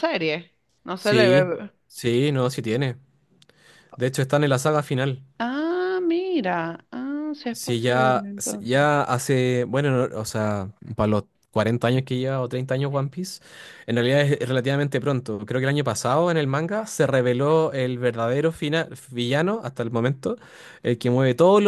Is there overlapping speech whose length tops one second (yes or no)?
yes